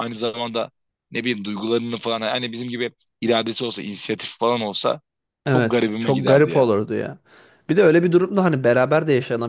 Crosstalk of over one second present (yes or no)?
yes